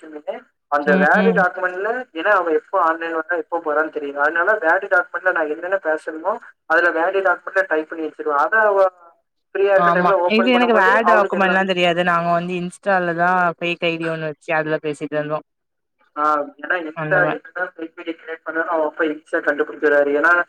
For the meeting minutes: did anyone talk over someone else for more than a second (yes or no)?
yes